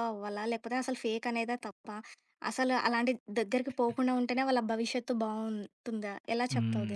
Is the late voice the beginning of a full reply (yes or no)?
yes